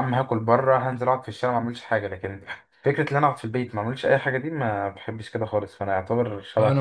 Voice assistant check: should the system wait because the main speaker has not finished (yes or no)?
no